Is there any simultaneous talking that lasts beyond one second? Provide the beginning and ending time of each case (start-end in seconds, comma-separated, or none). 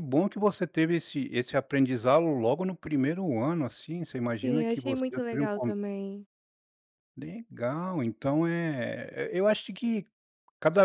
4.3-5.7